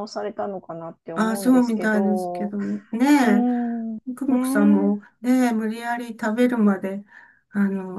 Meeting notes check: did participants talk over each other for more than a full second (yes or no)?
yes